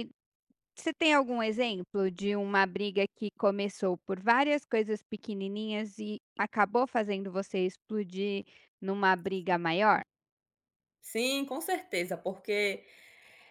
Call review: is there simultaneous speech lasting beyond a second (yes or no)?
no